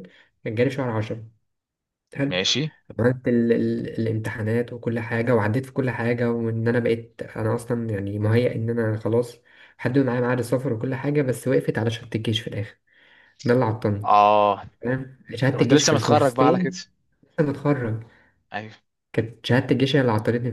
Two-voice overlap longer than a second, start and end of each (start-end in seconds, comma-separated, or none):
15.5-16.7